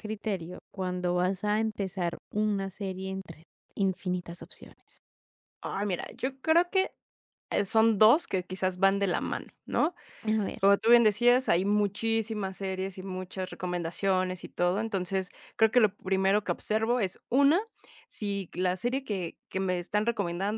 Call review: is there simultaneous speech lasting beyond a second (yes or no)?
no